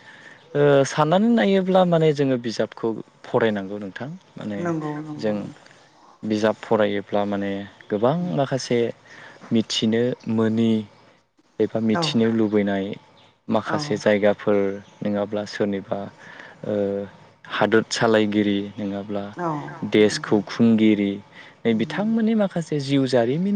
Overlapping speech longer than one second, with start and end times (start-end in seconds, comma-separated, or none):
none